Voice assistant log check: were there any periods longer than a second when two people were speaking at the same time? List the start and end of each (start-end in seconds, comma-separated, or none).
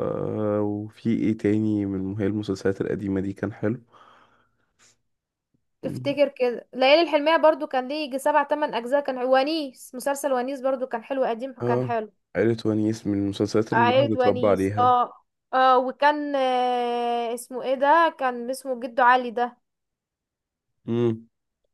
13.7-14.9